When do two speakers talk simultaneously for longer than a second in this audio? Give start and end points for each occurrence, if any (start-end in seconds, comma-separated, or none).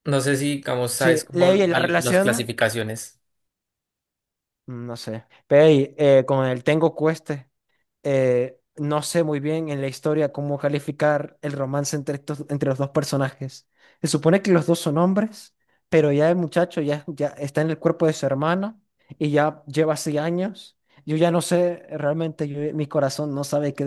0.9-2.5